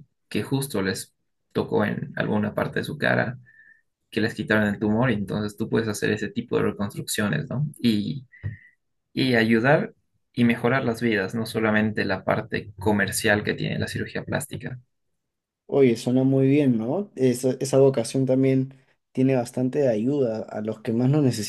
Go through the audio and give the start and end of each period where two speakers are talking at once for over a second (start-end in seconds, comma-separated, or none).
none